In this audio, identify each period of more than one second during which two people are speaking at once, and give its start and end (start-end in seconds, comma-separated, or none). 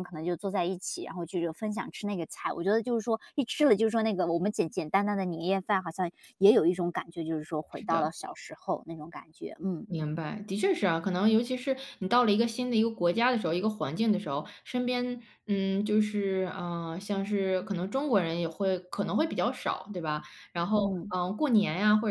none